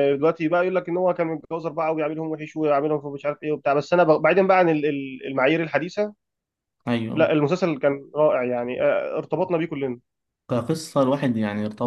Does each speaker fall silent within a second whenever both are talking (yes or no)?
yes